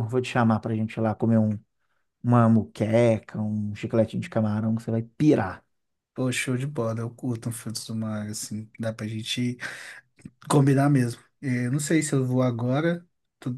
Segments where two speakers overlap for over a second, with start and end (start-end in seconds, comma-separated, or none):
none